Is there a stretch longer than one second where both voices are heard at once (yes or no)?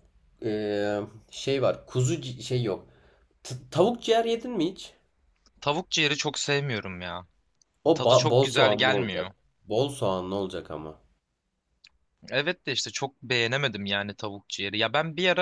yes